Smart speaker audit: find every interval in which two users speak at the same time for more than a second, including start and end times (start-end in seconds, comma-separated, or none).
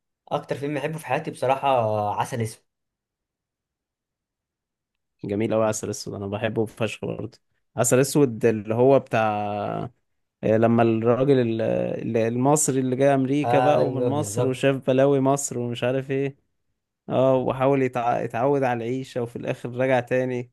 13.4-14.7